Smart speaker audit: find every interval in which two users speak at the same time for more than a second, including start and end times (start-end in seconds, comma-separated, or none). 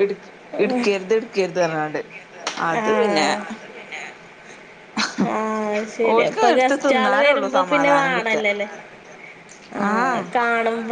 6.1-8.4